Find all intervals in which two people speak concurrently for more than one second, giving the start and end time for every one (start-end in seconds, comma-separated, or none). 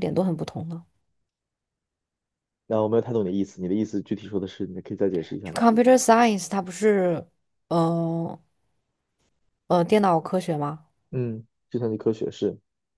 none